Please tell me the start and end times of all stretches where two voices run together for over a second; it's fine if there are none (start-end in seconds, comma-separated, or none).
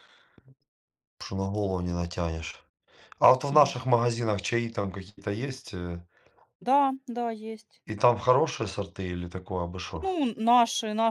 none